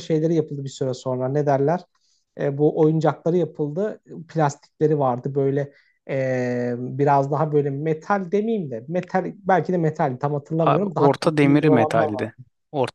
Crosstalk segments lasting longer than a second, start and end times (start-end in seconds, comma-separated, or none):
10.7-12.3